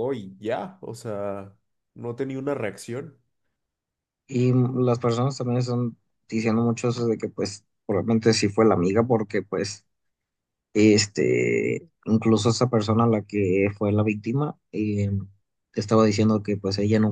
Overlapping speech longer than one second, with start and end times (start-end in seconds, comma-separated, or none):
none